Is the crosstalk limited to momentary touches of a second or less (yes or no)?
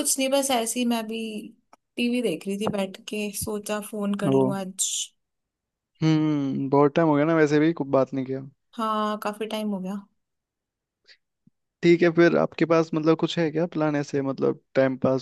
yes